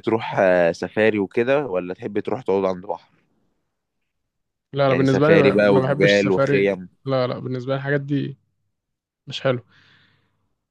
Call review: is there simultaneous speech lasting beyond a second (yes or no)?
yes